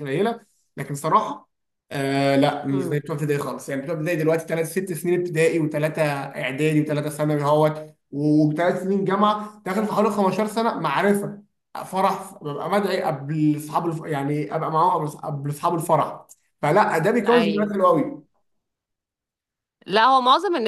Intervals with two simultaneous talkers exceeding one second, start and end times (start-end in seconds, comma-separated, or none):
none